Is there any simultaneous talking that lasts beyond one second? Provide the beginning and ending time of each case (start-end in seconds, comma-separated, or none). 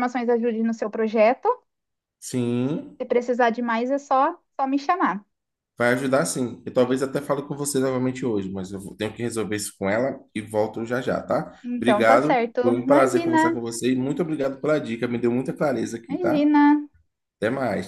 11.6-13.6